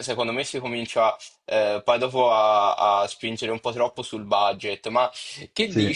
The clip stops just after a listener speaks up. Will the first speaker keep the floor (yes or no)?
yes